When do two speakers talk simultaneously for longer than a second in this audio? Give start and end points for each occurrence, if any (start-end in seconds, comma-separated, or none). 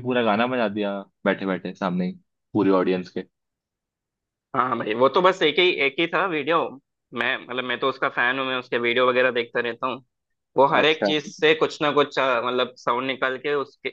none